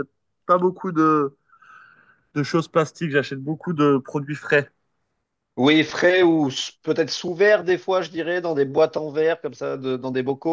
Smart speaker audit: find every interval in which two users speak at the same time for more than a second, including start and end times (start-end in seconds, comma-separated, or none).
none